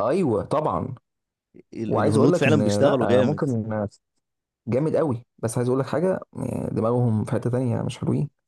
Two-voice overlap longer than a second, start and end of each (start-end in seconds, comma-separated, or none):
1.9-3.4